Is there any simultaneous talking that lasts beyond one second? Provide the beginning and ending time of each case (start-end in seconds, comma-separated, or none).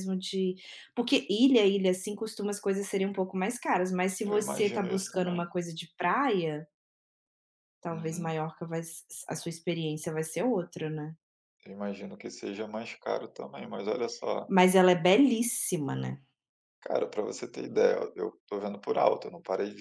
4.2-5.5